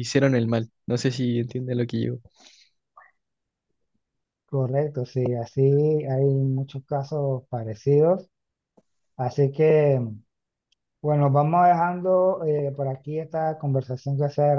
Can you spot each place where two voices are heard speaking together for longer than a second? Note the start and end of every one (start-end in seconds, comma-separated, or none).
none